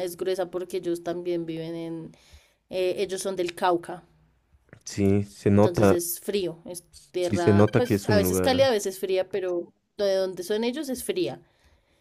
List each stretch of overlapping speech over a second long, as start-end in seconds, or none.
7.2-8.7